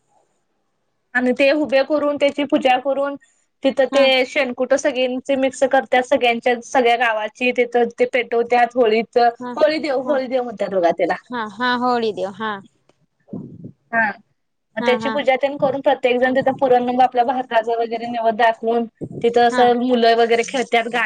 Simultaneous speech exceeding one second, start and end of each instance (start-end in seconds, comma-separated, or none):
none